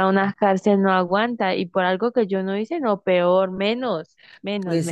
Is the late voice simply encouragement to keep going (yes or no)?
no